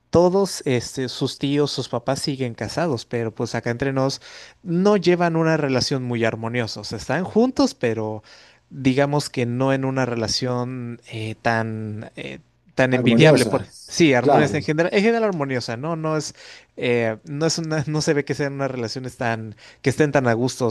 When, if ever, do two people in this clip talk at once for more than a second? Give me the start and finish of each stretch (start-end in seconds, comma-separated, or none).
12.9-14.7